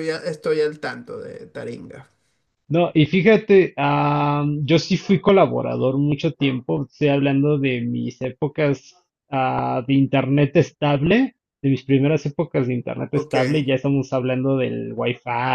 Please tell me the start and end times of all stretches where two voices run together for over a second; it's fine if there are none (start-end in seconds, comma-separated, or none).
none